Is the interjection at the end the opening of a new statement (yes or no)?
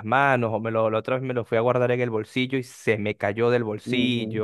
yes